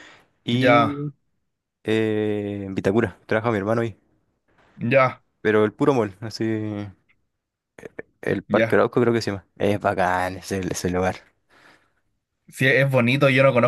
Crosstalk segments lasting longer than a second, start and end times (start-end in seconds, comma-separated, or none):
none